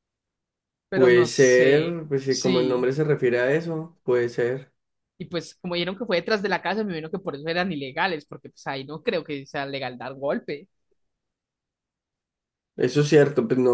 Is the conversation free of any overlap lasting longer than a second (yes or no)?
no